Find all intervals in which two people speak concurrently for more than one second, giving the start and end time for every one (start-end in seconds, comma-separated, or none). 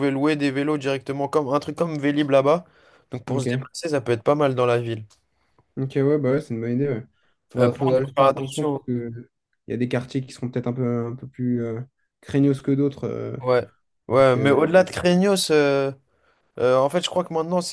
7.6-8.8